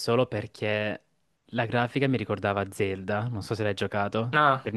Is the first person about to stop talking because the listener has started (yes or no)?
yes